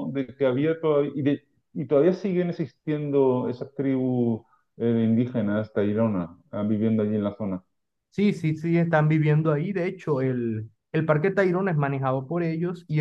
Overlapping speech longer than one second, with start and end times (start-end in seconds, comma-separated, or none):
none